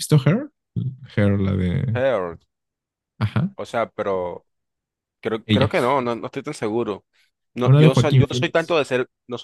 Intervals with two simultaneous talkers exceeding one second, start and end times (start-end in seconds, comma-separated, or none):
7.6-8.8